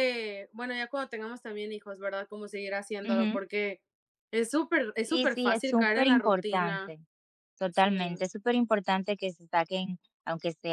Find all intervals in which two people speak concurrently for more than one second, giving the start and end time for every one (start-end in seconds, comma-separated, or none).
5.1-6.9